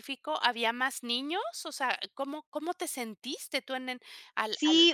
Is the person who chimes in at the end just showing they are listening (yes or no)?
no